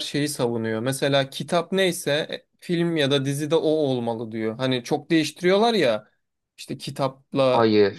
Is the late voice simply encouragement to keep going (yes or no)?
yes